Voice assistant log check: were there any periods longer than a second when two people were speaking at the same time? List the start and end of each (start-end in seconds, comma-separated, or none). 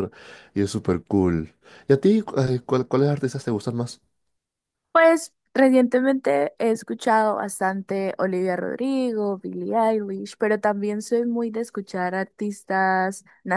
none